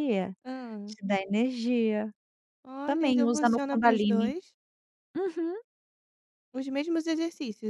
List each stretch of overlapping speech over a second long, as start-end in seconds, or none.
2.8-4.3